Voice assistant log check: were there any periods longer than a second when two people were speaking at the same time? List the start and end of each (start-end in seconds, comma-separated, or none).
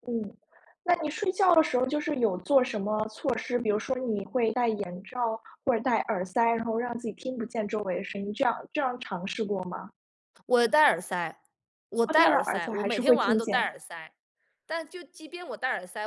12.1-13.7